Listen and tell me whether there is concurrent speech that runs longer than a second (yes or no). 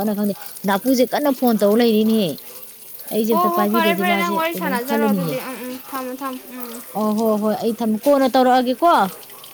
yes